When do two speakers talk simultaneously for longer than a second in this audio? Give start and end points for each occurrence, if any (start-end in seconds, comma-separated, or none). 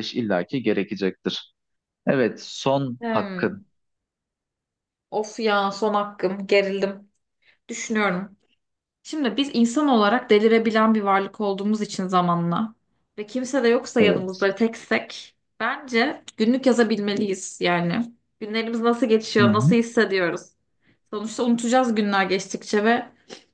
none